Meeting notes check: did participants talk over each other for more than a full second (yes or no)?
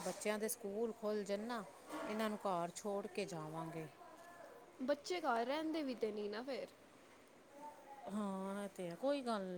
no